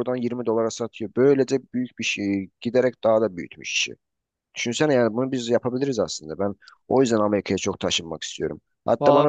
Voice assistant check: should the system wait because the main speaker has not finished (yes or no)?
yes